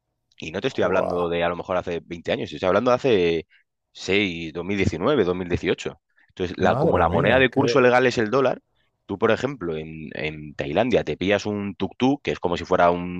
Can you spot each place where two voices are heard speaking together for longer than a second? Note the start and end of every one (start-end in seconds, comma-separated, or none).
6.6-7.8